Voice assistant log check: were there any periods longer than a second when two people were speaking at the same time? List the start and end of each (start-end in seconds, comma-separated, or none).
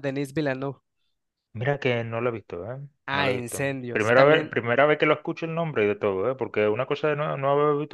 3.1-4.5